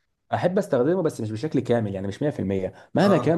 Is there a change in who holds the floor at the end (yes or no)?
no